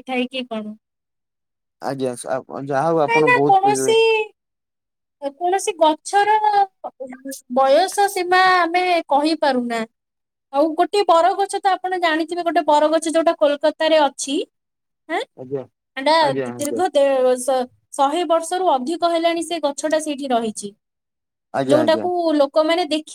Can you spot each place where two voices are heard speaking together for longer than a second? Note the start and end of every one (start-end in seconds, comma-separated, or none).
none